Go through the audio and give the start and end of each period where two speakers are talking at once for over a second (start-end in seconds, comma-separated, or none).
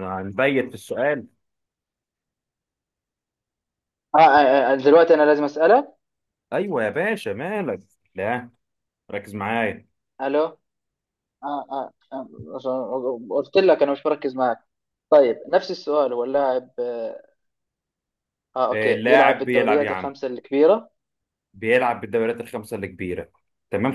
18.7-20.1